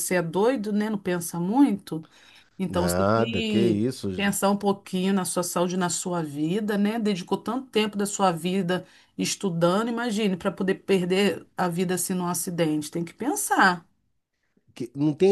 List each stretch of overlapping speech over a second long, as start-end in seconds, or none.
2.6-4.1